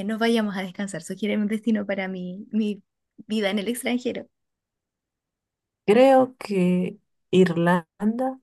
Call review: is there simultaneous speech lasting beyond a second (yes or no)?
no